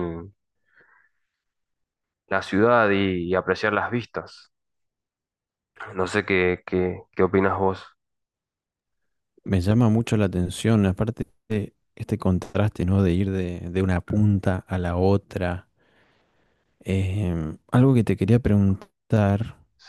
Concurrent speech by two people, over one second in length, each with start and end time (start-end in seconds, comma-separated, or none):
none